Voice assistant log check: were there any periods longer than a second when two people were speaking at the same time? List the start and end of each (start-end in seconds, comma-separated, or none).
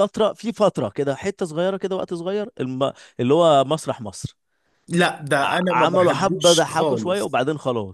5.4-7.4